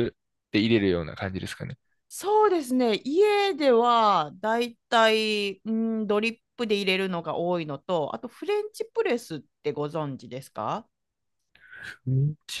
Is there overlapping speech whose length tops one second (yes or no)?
no